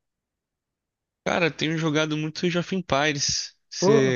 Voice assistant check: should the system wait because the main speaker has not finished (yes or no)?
no